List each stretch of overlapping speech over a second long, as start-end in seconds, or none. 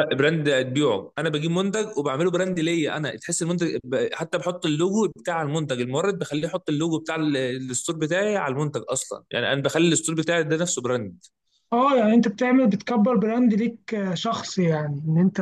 none